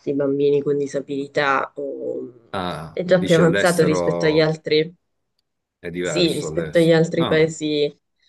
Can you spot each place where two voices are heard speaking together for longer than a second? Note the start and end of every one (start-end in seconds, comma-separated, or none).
2.9-4.6, 6.0-7.4